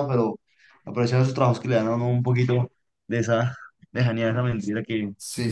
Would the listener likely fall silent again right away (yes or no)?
no